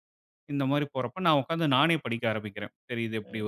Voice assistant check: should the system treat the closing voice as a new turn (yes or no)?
no